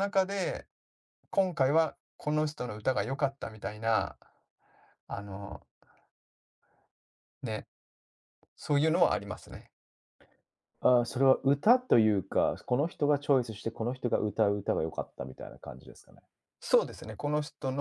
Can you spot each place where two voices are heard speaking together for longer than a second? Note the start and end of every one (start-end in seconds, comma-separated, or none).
none